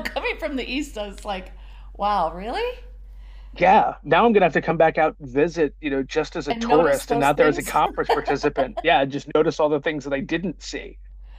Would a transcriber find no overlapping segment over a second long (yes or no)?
no